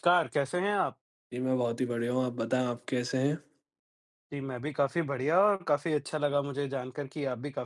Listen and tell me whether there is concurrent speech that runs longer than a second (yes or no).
no